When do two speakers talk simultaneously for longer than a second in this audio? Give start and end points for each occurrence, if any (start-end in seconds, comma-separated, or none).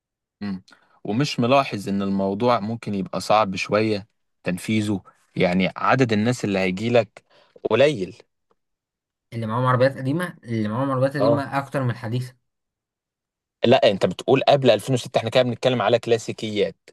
none